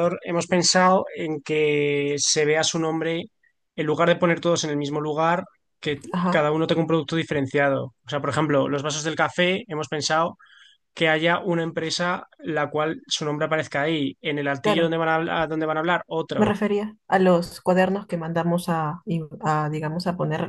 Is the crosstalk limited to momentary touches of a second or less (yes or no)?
yes